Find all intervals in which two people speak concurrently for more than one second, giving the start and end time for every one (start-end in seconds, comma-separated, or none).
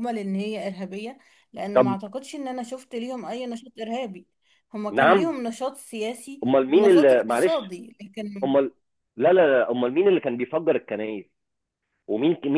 6.4-7.8